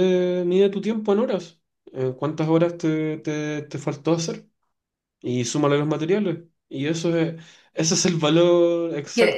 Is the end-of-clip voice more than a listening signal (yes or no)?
yes